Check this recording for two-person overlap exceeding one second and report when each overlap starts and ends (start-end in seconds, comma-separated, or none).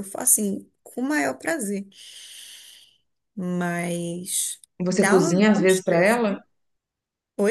4.8-6.4